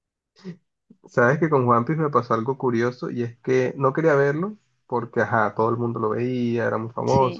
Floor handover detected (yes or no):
no